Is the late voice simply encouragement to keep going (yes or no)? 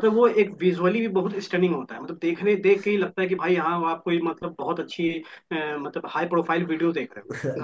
no